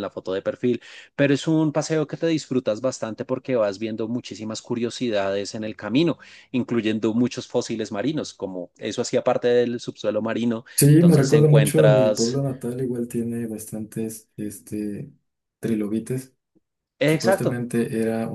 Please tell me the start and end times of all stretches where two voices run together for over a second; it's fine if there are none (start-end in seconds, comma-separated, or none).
10.8-12.4